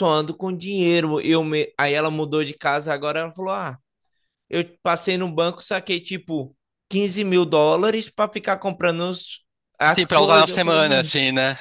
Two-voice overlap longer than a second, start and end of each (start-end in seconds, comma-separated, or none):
9.8-11.1